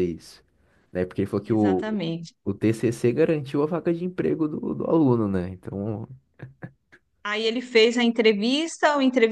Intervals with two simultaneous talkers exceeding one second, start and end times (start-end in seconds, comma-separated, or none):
none